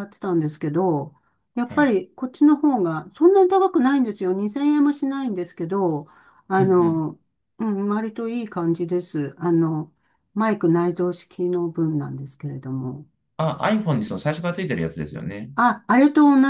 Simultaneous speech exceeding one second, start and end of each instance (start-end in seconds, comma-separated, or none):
none